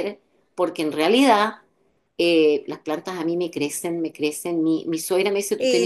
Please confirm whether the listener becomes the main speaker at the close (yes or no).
no